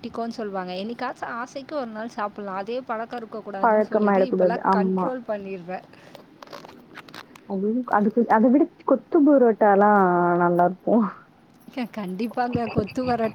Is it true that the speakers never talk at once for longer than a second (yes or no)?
no